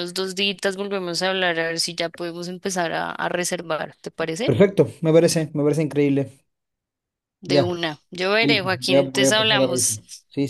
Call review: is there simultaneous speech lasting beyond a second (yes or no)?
yes